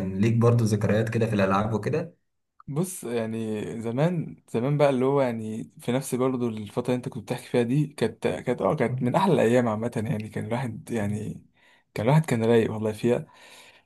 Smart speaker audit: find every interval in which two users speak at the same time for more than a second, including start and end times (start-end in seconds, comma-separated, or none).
none